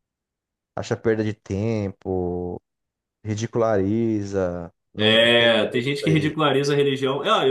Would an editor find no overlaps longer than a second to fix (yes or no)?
no